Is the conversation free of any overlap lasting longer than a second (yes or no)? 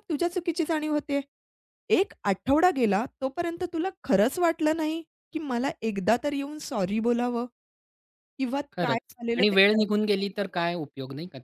no